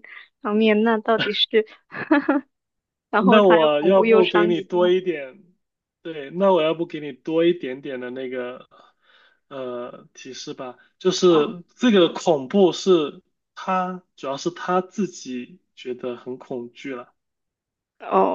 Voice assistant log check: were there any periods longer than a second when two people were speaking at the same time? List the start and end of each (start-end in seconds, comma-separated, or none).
3.3-4.9